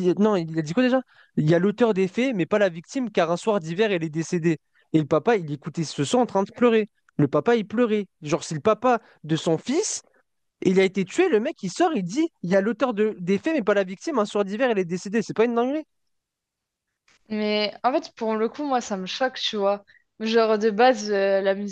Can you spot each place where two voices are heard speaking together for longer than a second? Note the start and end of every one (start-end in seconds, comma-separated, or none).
none